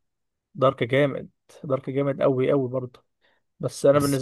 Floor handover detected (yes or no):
no